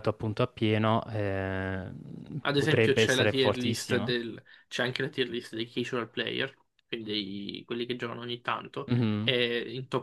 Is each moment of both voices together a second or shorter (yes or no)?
no